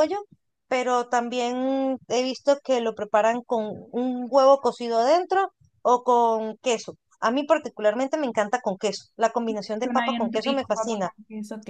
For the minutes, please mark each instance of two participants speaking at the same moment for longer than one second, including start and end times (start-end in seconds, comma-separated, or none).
9.8-11.1